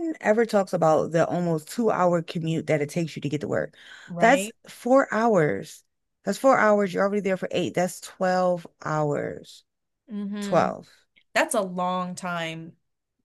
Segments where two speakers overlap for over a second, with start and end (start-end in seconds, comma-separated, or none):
none